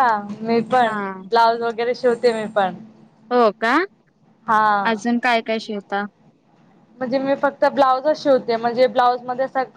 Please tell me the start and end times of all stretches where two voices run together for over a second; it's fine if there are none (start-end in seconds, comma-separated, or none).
none